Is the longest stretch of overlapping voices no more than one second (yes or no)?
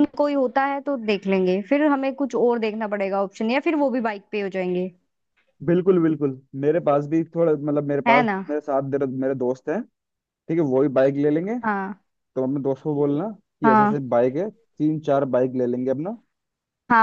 yes